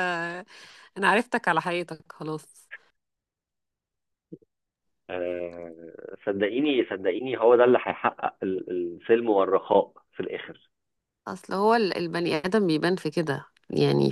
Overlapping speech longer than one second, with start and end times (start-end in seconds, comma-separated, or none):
none